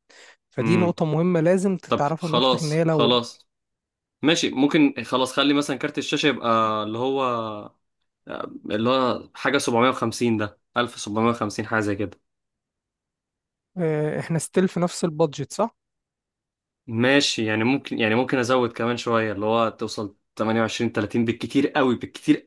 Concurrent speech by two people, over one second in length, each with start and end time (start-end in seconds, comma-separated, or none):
1.9-3.2